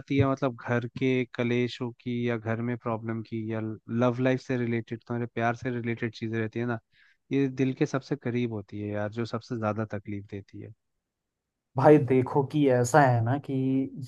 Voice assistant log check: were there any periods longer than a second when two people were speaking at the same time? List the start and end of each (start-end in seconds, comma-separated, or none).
none